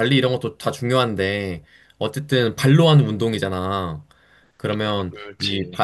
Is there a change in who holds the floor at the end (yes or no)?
no